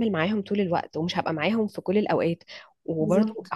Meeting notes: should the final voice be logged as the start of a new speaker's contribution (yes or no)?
no